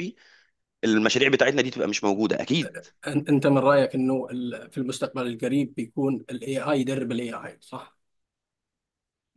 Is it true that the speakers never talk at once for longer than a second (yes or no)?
yes